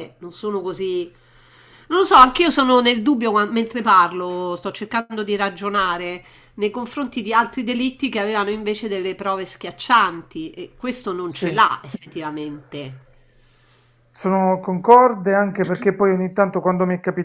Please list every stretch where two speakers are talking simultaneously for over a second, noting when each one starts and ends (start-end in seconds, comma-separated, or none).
none